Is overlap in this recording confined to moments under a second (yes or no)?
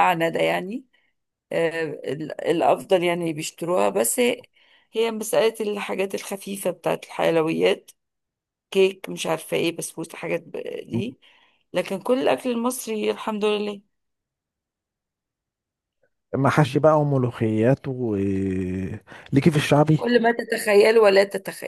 yes